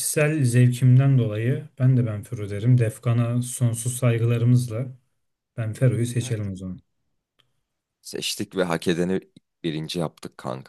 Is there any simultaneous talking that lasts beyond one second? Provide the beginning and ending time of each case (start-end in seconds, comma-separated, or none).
none